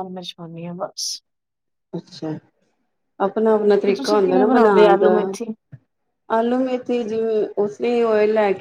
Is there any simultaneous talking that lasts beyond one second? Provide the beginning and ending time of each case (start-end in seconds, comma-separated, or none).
3.9-5.1